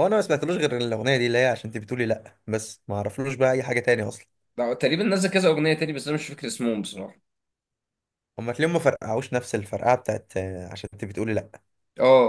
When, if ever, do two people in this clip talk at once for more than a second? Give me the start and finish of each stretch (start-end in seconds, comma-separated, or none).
none